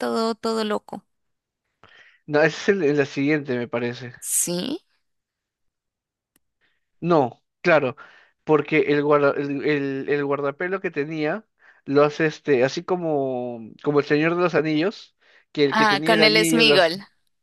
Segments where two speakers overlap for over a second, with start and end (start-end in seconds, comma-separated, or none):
15.7-16.9